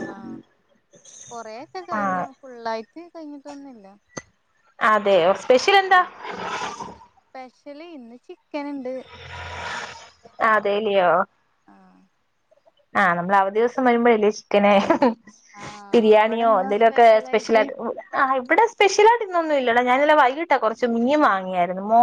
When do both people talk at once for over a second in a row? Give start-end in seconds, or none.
15.9-17.6